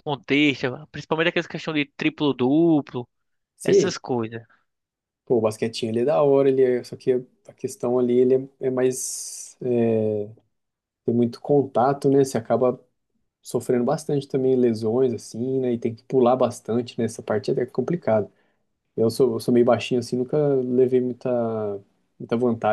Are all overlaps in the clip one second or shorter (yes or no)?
yes